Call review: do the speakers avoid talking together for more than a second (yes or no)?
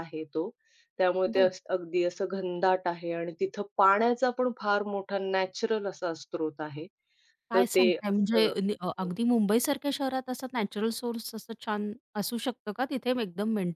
no